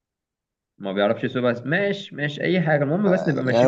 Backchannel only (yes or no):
no